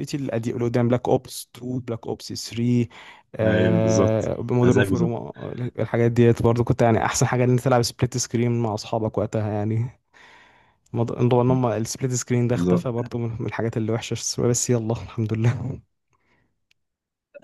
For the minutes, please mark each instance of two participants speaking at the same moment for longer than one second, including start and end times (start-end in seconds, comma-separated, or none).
3.5-5.1